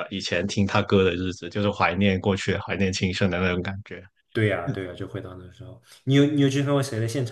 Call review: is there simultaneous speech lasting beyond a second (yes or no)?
no